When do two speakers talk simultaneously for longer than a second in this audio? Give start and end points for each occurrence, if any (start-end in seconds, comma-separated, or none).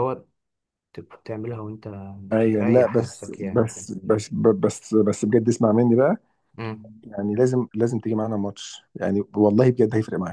2.4-3.9